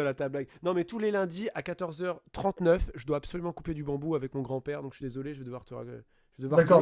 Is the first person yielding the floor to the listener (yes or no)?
yes